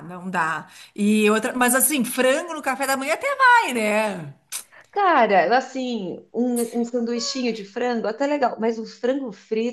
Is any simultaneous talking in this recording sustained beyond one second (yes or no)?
no